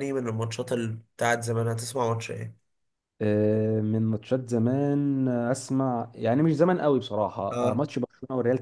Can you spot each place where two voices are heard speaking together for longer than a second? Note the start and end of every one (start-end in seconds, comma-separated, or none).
none